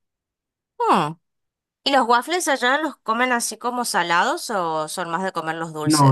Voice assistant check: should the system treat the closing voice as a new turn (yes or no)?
yes